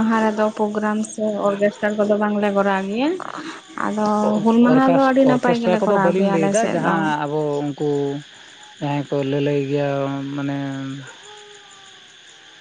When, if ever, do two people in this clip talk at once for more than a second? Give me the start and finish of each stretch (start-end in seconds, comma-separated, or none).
4.4-6.9